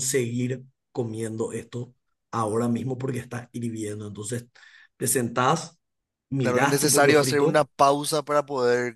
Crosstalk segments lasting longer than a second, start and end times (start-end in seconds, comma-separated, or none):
6.4-7.7